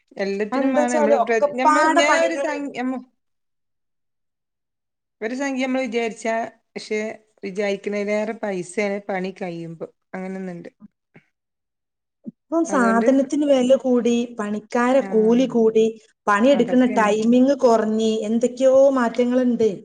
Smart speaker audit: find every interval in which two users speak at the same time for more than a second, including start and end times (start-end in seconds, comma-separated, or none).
0.5-2.5